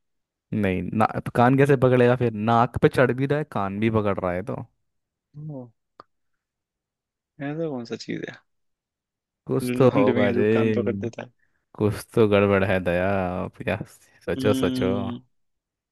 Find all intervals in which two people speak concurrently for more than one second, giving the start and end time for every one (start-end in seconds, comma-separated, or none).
9.6-11.1